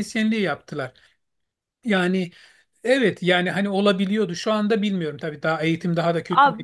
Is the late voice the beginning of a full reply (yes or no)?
yes